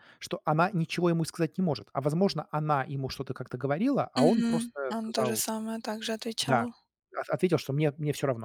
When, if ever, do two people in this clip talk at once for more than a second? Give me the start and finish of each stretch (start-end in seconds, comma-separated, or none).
4.2-5.4